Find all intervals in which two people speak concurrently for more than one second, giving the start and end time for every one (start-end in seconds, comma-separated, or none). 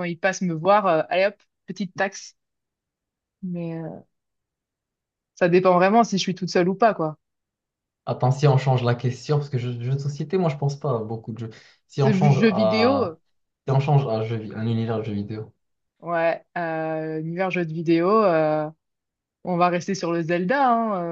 11.9-13.2